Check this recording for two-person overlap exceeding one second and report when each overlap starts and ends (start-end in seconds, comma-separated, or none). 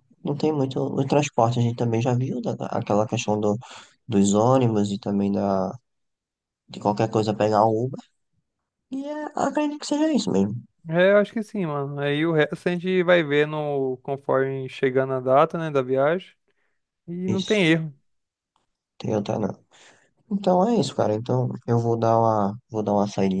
none